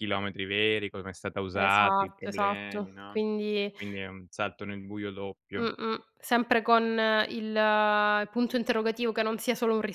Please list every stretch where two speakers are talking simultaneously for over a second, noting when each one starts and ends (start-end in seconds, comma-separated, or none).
1.5-3.7